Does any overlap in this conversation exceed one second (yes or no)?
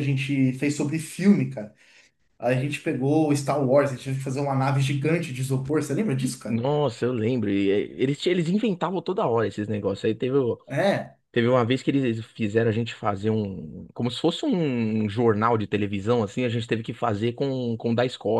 no